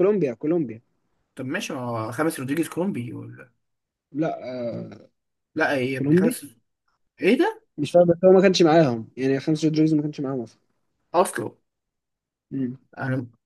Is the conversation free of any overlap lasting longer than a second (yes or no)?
yes